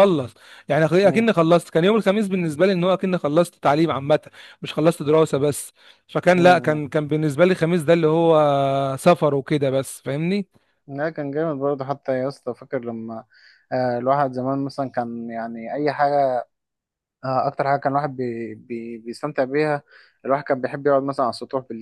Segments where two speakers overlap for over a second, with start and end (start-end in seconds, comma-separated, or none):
none